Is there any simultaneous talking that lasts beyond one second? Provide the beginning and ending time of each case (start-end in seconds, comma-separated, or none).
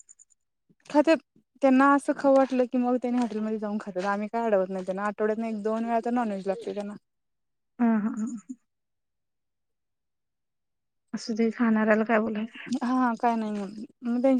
none